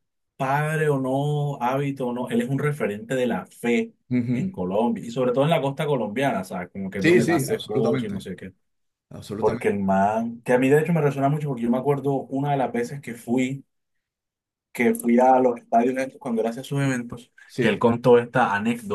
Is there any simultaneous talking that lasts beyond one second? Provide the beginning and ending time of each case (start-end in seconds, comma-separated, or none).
7.0-8.2